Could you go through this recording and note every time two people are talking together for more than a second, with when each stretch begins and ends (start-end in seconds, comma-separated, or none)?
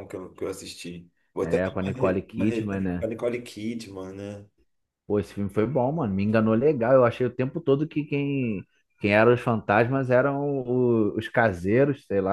1.4-3.1